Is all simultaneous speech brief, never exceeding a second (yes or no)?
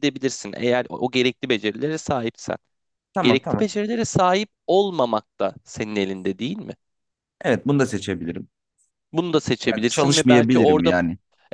no